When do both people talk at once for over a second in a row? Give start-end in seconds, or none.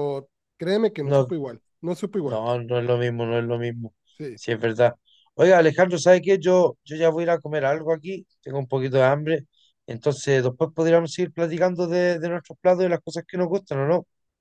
none